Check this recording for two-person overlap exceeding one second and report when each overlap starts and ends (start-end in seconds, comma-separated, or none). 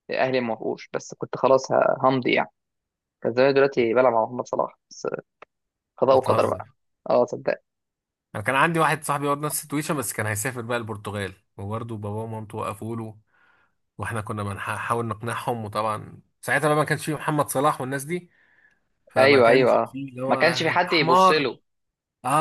19.2-21.5